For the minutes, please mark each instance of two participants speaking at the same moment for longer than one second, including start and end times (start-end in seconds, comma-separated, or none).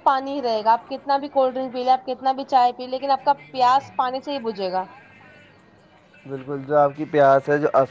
none